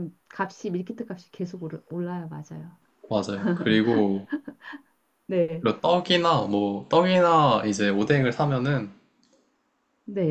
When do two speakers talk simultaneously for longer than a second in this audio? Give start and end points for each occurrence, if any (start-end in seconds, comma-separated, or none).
none